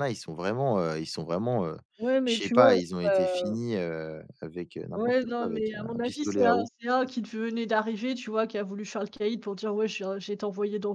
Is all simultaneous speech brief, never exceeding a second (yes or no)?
no